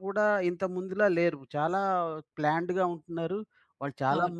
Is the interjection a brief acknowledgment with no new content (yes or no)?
yes